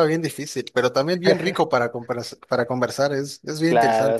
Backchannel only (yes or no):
no